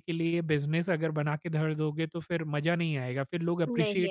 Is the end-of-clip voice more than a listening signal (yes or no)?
no